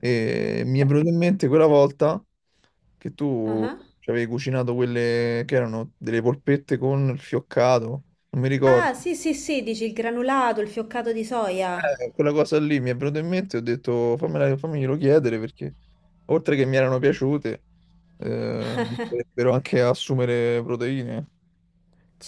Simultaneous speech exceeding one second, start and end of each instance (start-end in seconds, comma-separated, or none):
none